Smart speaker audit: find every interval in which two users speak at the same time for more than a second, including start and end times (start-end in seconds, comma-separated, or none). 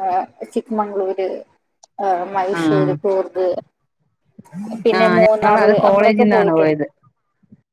5.0-6.8